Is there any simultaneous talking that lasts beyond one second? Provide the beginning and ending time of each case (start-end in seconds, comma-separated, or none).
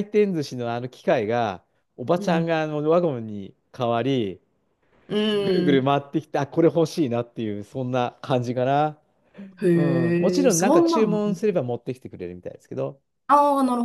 9.7-11.2